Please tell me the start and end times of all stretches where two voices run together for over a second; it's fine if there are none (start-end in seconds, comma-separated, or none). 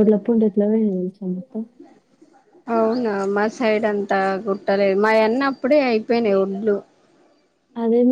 none